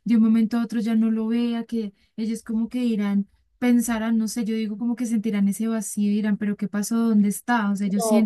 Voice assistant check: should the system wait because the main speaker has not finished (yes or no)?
no